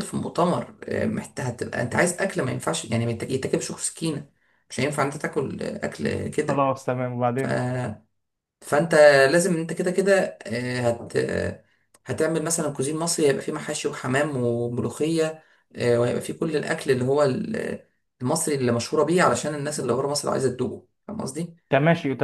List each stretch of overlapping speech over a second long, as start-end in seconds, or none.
none